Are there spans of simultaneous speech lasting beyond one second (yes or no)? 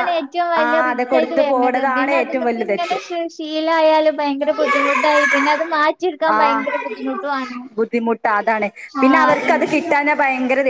yes